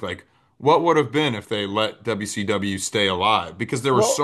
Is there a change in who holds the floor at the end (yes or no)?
no